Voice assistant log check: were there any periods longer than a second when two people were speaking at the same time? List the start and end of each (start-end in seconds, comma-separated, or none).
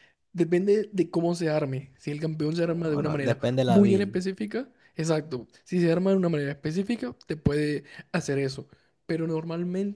2.6-4.2